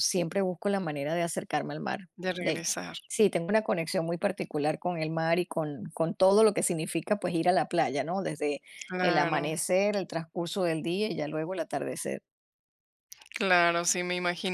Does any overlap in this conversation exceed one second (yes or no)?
no